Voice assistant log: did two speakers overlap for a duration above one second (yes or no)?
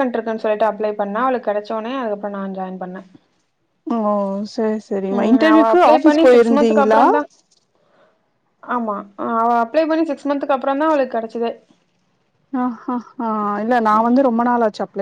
yes